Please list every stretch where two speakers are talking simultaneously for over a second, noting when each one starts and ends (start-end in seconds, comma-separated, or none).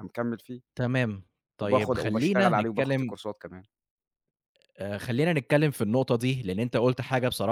1.6-3.1